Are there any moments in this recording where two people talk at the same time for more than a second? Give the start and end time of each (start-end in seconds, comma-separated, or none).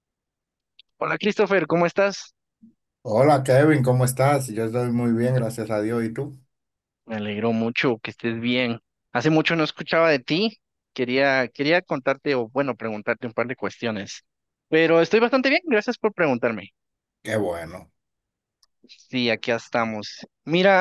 none